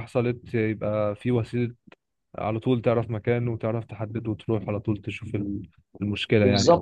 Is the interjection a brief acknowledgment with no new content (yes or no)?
no